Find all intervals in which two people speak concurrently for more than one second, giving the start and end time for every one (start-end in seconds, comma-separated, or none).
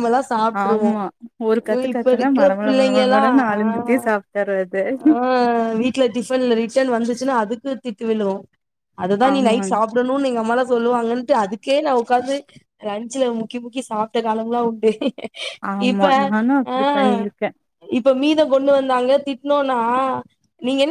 1.7-4.0